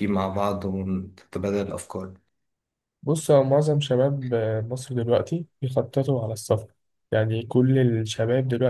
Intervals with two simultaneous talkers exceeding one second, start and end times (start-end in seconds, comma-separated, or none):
none